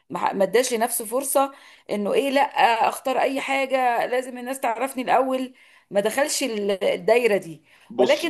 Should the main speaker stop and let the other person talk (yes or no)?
no